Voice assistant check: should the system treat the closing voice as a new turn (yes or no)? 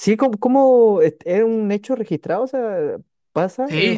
yes